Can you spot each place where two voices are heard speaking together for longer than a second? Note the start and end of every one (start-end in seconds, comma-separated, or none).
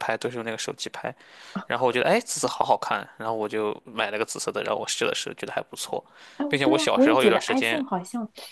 6.5-7.8